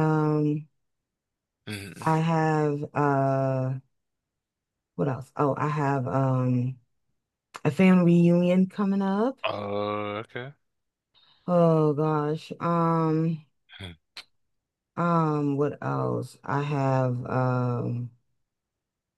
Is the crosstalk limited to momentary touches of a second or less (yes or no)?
yes